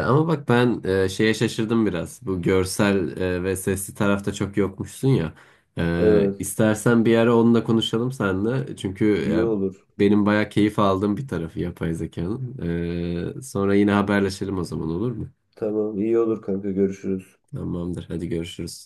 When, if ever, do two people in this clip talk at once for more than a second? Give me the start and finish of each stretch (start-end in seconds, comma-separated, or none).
none